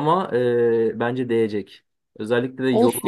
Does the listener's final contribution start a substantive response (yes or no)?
no